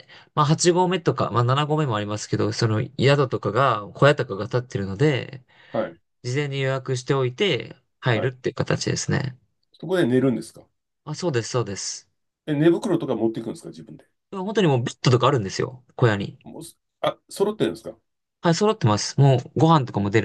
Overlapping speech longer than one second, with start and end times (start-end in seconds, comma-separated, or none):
none